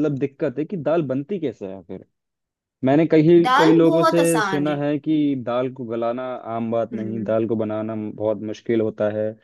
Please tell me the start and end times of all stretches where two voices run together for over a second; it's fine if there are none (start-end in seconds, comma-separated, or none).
3.5-4.8